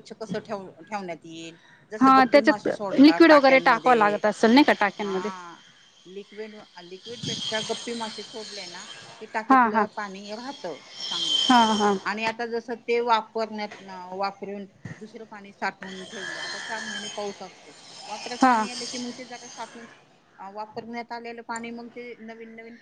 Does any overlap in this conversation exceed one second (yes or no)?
yes